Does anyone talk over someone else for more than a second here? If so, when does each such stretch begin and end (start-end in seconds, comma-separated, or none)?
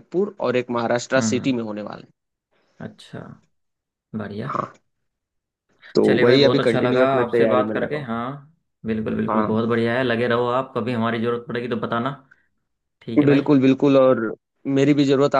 6.0-8.1